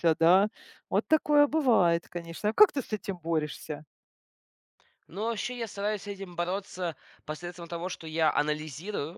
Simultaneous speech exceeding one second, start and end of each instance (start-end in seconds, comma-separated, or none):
none